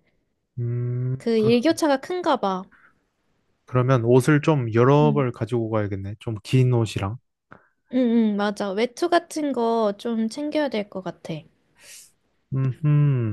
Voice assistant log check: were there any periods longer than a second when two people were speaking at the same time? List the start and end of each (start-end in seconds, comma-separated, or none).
none